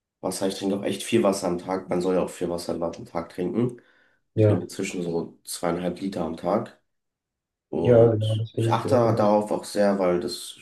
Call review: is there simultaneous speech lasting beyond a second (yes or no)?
yes